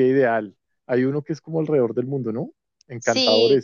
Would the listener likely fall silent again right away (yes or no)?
no